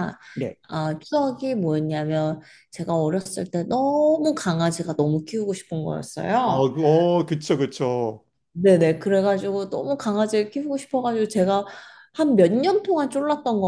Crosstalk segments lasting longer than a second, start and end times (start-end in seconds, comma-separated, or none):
none